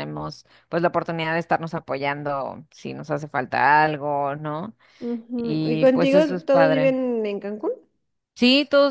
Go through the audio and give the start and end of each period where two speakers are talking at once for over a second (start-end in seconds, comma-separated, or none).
5.3-6.9